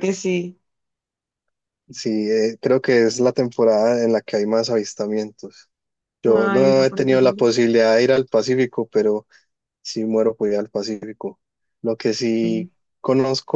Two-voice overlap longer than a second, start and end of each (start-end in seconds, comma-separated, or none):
6.2-7.5